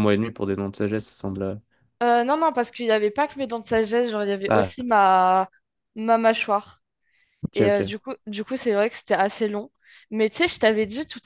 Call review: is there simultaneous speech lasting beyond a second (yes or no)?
no